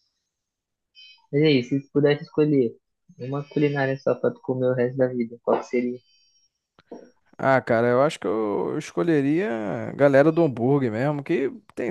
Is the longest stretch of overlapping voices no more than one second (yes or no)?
yes